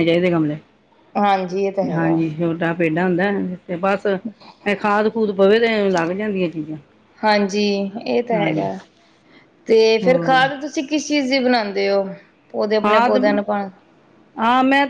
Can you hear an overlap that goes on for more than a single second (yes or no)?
no